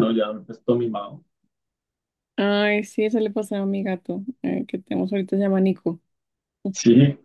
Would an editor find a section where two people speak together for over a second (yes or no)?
no